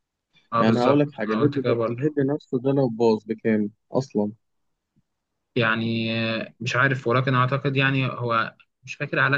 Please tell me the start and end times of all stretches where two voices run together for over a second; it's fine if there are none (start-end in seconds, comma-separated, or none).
0.6-2.0